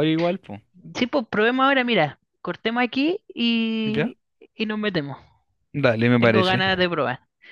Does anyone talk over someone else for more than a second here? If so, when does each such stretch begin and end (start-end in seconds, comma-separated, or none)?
none